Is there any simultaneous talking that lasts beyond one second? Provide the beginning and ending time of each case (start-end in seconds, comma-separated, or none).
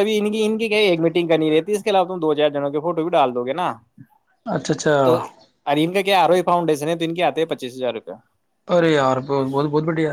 none